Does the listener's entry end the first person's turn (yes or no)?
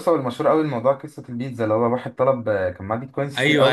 yes